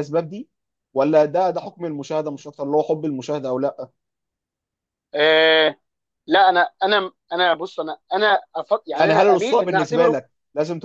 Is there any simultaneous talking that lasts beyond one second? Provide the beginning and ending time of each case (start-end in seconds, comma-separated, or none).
8.9-10.2